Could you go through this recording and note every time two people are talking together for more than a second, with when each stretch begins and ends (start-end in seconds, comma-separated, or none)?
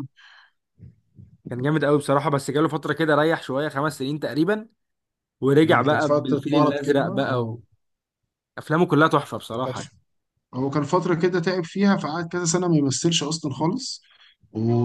5.6-7.5